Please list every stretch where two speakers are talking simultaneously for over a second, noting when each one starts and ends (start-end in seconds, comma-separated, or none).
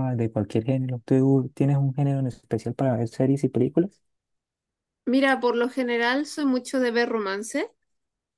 none